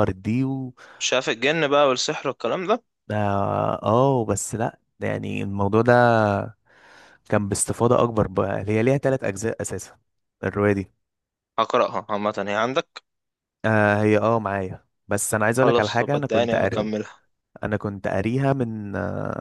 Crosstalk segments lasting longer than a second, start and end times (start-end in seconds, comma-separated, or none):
15.6-16.9